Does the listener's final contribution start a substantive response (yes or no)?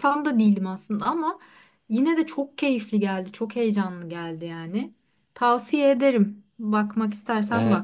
yes